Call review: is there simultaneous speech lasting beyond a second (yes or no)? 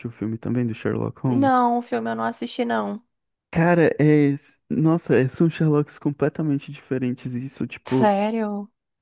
no